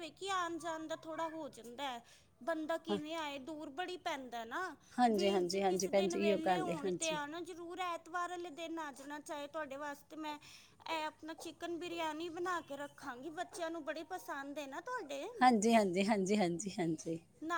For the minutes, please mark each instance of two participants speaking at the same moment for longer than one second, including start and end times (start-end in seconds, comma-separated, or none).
5.1-7.2